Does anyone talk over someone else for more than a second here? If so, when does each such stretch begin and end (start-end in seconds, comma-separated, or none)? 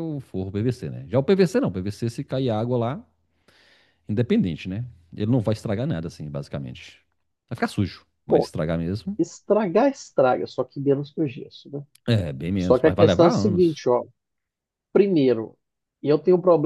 12.6-13.9